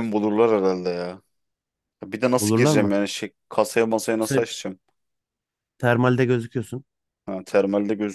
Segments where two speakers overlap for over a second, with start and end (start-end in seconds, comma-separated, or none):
none